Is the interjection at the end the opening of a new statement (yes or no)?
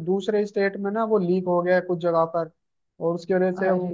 no